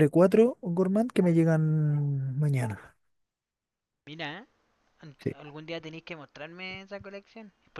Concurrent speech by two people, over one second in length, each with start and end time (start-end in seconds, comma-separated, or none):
none